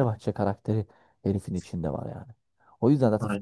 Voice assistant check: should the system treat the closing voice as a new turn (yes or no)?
no